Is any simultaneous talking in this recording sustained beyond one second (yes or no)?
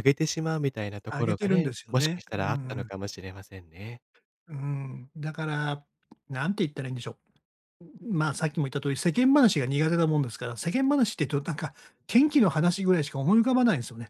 yes